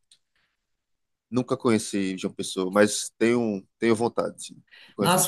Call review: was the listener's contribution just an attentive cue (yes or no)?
no